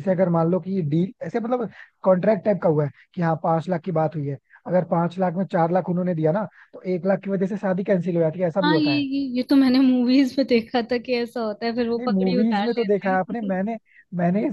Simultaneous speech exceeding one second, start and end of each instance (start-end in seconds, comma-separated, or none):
12.0-13.5